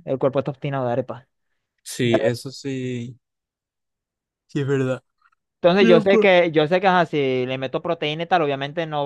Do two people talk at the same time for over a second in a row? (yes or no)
no